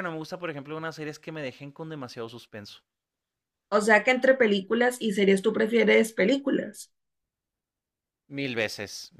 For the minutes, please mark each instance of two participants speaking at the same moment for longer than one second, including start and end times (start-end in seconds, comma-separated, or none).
none